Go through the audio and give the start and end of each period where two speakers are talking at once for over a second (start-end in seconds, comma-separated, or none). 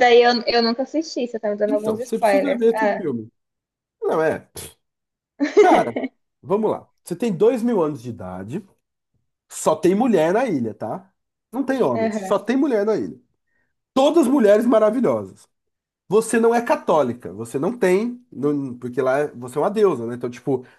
1.7-3.1